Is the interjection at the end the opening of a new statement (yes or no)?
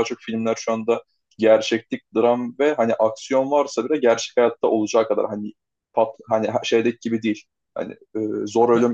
no